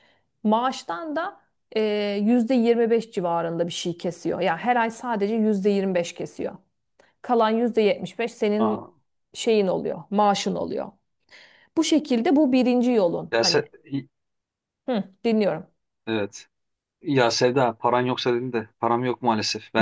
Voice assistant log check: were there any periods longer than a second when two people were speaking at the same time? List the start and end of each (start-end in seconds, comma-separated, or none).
none